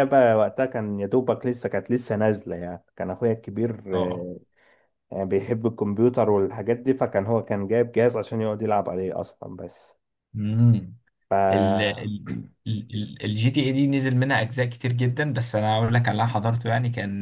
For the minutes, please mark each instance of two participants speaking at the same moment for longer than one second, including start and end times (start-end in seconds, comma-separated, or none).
none